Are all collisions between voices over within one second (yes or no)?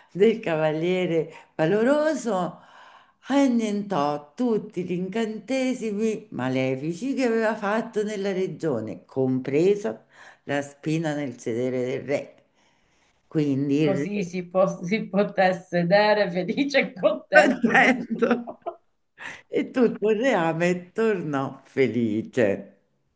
no